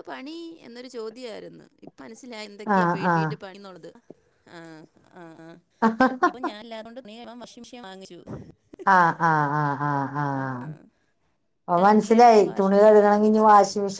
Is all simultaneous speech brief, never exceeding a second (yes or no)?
no